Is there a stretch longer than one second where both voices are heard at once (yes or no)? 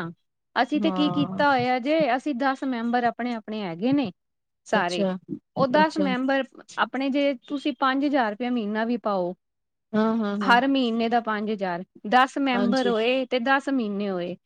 no